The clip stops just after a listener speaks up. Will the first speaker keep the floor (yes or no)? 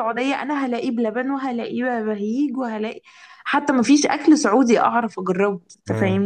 no